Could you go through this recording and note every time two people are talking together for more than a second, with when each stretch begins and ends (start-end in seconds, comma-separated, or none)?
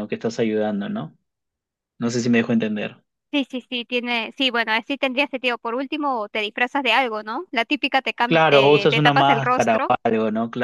8.2-9.9